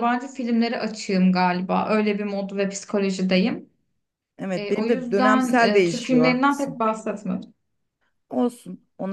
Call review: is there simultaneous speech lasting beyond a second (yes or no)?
yes